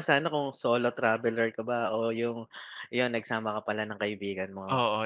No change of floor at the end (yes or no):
no